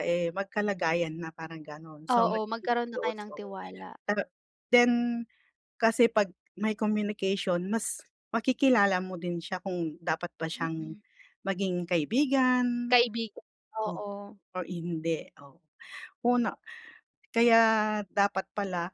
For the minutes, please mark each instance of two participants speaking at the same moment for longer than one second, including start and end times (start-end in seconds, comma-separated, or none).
2.1-3.5